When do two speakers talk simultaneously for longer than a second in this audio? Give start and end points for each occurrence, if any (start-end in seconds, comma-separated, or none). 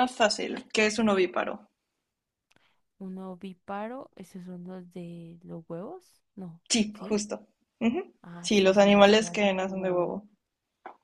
8.2-10.1